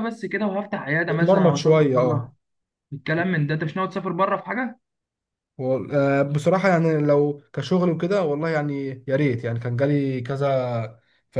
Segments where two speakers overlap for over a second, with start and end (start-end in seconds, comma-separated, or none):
1.1-2.3